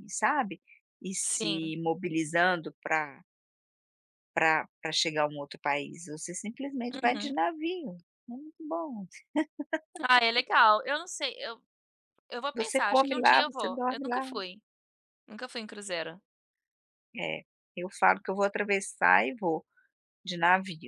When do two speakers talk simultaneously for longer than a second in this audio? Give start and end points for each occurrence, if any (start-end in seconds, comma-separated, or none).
12.6-14.2